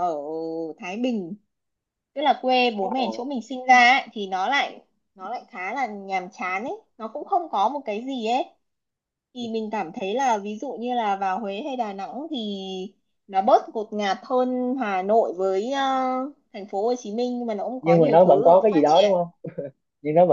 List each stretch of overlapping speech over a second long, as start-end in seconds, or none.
17.8-19.1